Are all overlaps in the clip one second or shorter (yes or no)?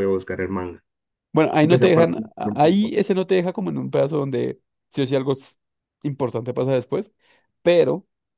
no